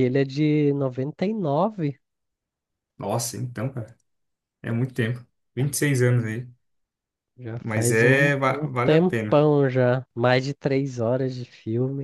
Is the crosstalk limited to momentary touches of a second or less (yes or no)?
no